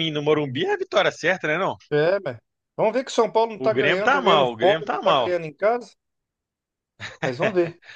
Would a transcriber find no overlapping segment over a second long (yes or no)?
no